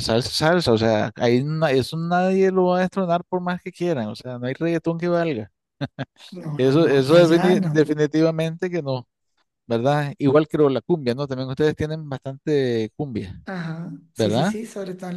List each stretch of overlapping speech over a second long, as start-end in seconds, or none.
6.6-7.8